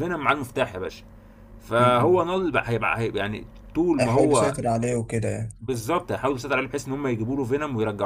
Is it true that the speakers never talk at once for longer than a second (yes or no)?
yes